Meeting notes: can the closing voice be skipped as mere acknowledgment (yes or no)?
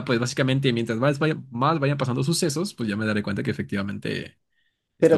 no